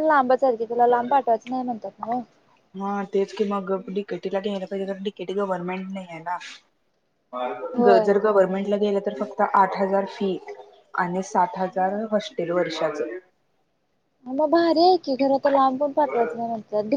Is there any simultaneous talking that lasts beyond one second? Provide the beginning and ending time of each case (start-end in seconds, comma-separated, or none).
none